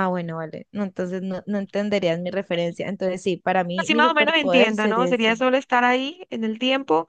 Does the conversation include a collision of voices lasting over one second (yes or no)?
yes